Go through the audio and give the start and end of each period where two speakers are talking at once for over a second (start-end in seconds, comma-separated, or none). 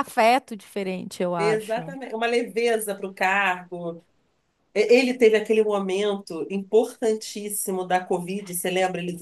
none